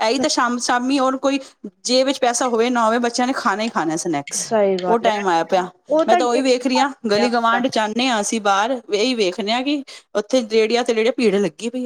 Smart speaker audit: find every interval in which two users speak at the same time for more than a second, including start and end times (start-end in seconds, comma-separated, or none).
6.1-7.6